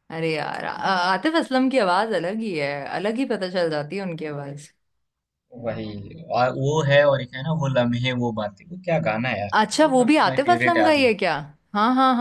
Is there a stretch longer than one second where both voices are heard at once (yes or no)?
yes